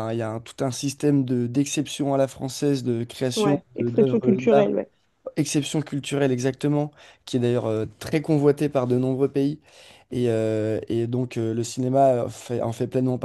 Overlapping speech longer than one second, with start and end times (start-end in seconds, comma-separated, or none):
3.4-4.7